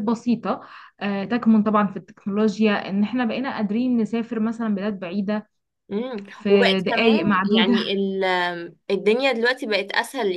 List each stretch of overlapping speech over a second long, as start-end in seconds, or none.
6.3-7.7